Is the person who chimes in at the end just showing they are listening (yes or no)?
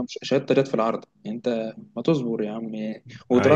yes